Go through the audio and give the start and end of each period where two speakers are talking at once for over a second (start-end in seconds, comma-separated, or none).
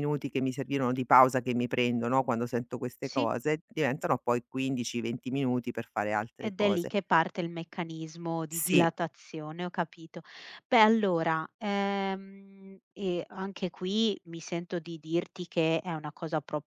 none